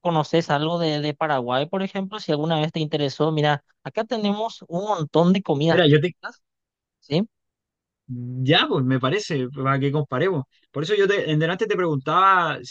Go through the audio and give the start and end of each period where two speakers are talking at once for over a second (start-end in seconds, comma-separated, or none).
none